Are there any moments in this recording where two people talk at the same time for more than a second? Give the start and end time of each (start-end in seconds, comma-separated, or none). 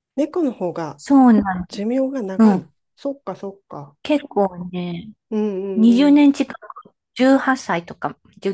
none